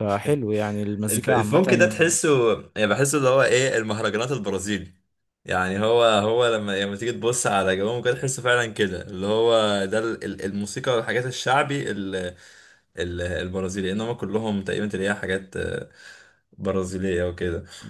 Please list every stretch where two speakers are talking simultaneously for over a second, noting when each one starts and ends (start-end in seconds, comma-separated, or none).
none